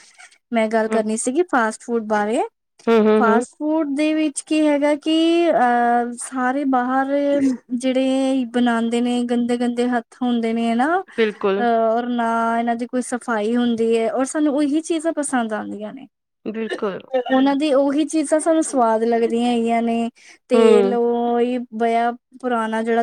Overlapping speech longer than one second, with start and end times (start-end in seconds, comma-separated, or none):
none